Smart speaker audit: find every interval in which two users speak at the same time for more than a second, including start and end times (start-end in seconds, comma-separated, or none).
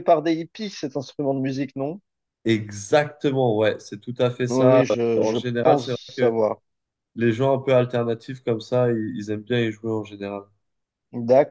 4.5-6.4